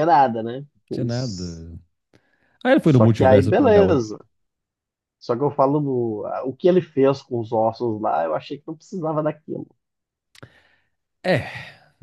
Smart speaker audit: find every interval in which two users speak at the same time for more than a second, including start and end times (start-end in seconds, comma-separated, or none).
2.8-4.1